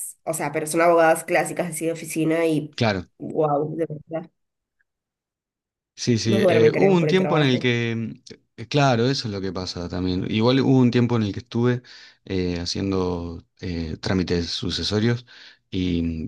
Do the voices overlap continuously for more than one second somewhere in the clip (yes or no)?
yes